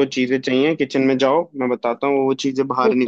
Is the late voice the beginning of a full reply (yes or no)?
yes